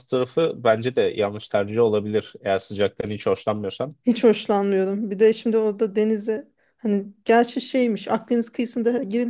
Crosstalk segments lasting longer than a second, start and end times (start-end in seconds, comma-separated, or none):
none